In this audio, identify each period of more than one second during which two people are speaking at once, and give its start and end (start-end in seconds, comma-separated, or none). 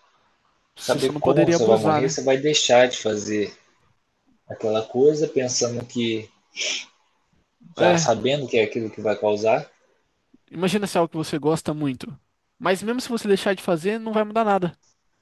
0.8-2.2